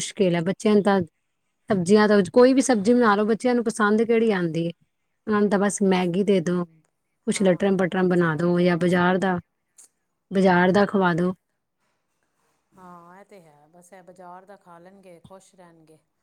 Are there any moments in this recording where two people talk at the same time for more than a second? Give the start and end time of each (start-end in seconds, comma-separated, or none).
7.3-9.0